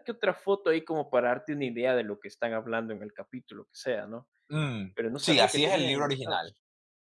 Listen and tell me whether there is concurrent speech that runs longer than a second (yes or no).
yes